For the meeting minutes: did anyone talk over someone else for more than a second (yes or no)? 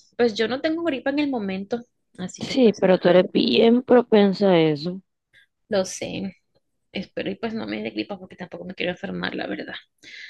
no